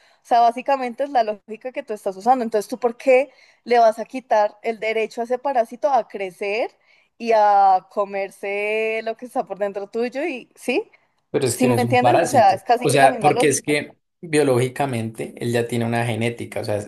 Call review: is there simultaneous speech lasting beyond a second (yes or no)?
yes